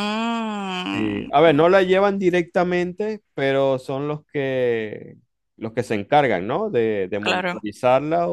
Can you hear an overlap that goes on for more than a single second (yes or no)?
no